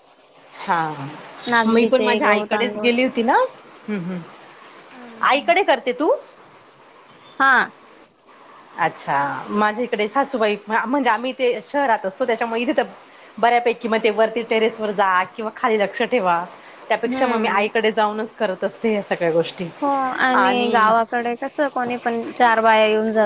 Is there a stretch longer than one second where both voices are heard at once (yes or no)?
yes